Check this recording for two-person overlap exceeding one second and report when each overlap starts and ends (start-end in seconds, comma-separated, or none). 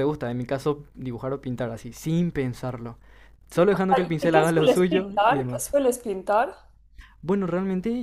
4.2-5.8